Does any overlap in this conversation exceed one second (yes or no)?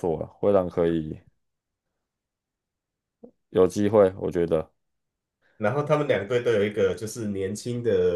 no